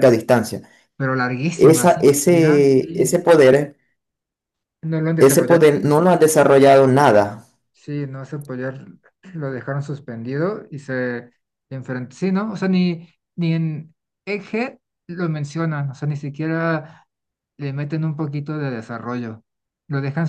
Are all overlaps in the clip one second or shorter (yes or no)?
no